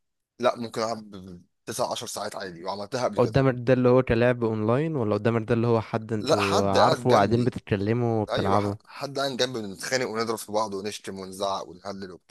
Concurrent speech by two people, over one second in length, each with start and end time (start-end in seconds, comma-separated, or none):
6.2-7.5